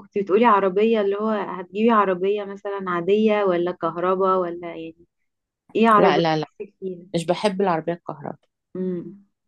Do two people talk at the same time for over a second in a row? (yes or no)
no